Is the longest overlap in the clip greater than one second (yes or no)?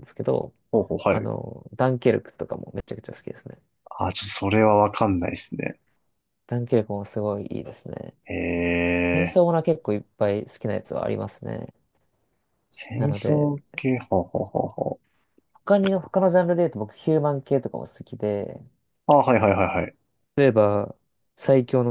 no